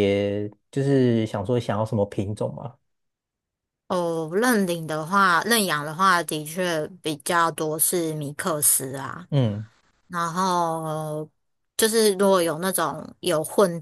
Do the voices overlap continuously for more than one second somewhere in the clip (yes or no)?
no